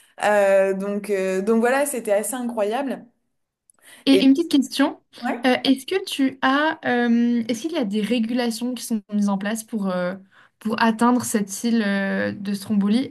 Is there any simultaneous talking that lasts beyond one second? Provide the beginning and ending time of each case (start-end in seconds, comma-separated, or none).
none